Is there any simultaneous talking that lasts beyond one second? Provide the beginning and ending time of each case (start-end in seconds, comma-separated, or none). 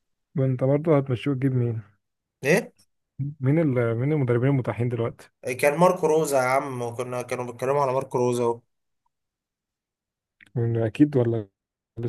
none